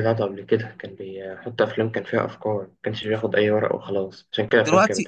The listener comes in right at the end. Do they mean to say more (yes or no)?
yes